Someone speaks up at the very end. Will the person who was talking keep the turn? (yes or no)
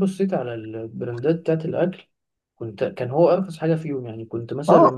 yes